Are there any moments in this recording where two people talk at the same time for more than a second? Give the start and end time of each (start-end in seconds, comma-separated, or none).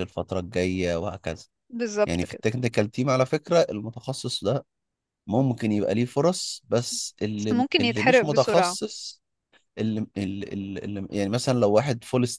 7.4-8.8